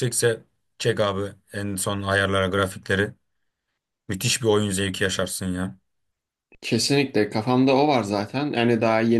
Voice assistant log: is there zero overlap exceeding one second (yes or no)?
yes